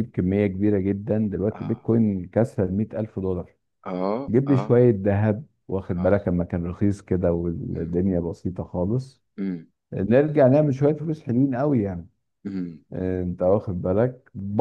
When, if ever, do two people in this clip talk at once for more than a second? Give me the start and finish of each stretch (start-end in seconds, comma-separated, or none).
none